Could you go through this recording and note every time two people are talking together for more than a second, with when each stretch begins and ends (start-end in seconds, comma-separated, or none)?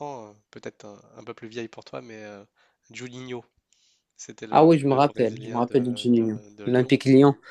4.5-6.9